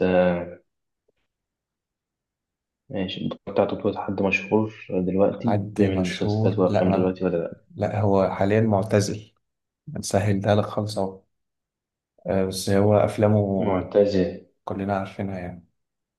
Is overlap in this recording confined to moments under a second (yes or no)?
no